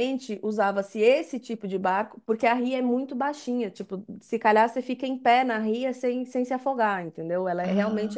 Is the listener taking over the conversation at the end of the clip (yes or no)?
no